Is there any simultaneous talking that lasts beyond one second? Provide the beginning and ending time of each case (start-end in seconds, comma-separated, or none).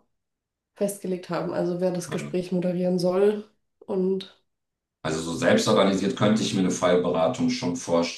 none